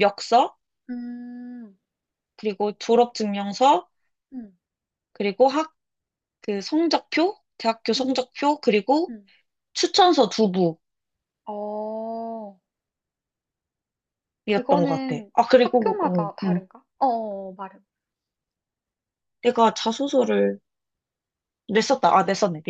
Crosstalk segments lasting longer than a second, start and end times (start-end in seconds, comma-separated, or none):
14.5-16.6